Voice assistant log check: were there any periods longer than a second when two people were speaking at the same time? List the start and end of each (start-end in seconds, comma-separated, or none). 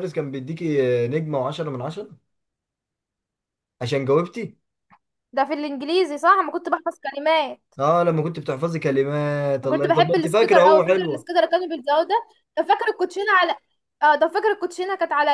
9.6-11.2